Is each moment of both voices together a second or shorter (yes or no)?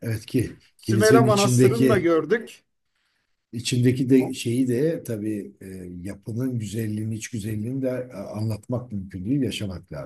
no